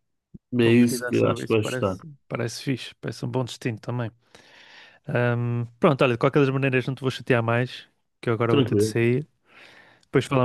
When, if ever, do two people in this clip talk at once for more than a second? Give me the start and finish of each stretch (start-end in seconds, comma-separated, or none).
0.6-2.0